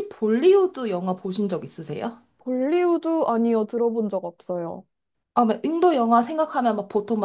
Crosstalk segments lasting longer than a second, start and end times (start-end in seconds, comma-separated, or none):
none